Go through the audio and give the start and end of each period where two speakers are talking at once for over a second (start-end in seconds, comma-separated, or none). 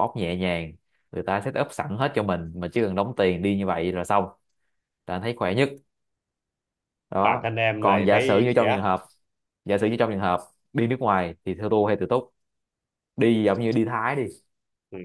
7.2-8.9